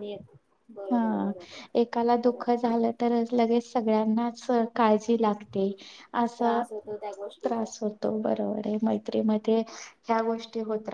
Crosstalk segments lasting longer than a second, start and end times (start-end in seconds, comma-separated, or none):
none